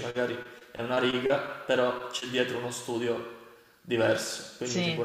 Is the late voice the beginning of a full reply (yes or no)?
yes